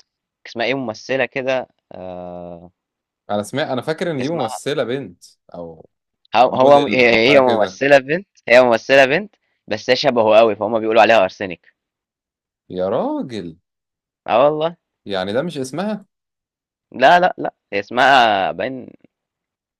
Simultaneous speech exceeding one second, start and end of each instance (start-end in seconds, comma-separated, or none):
6.5-7.8